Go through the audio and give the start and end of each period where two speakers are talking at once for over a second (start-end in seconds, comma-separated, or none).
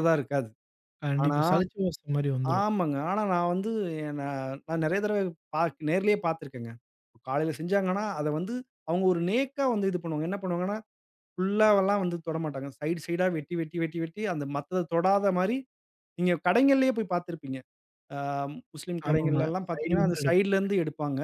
19.1-20.5